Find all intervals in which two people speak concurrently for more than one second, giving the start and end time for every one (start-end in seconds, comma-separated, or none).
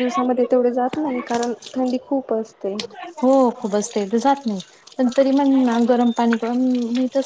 none